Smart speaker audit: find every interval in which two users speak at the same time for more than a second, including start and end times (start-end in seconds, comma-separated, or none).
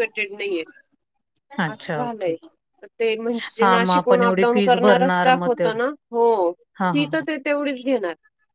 3.6-5.8